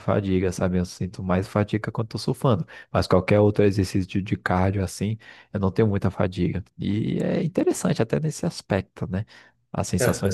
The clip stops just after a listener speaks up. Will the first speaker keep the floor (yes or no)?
yes